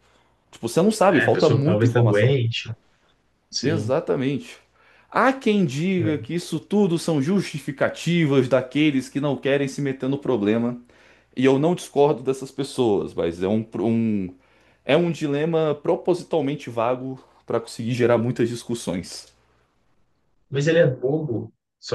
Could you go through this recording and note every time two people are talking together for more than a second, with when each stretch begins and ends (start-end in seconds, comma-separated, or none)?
1.1-2.3